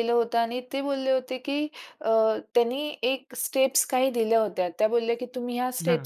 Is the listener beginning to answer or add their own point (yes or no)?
no